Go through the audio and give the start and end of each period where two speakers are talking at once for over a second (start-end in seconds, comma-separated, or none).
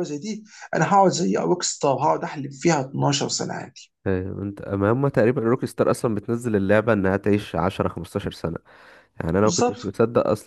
none